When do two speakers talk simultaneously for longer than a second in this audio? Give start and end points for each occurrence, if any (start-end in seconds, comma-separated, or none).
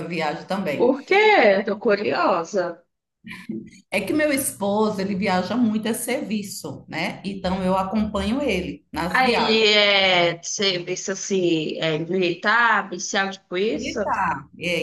none